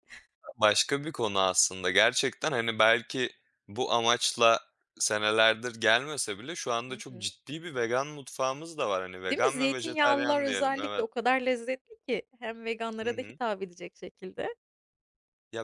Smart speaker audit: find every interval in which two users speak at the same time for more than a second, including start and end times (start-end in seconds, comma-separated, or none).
9.2-11.1